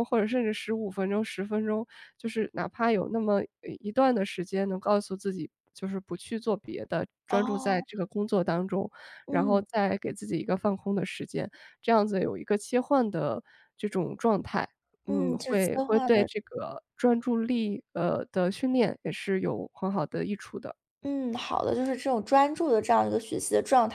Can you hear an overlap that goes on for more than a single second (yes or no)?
yes